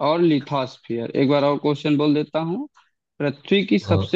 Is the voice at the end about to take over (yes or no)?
no